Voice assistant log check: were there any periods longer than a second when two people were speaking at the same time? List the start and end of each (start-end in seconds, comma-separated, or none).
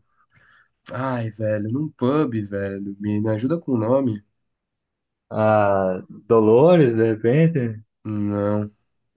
none